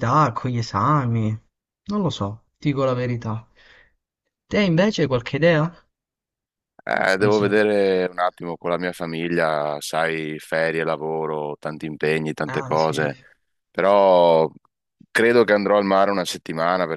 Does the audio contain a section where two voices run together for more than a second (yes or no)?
no